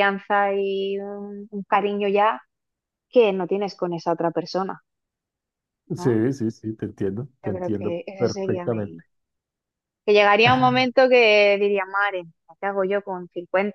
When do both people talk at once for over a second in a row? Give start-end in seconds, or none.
7.5-9.0